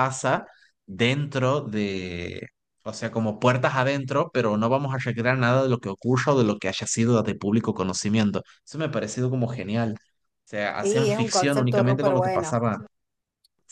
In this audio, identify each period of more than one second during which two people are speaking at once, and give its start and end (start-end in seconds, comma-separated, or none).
10.8-12.6